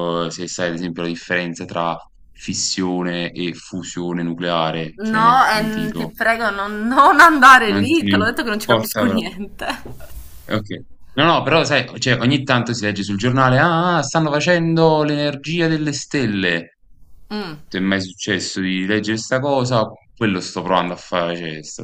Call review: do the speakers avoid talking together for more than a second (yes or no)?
no